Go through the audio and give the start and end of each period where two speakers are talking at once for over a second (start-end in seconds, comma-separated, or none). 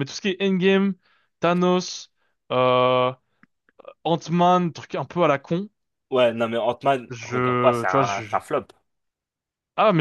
7.1-8.4